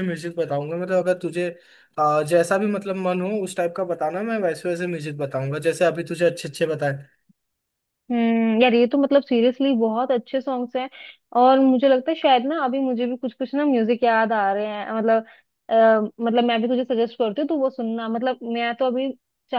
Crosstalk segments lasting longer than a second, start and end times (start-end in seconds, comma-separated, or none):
none